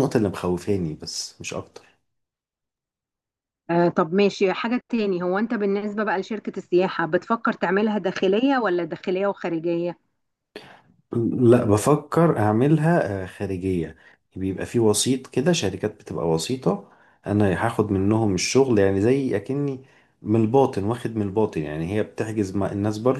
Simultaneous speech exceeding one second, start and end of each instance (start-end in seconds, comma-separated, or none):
none